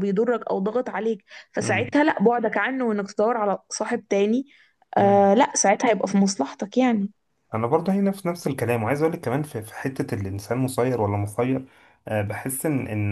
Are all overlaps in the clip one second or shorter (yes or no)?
yes